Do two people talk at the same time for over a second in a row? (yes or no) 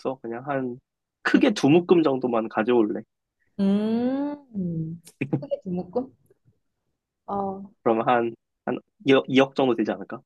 no